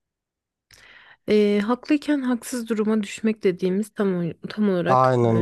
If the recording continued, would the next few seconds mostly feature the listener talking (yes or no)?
no